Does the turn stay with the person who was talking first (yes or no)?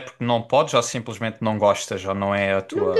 no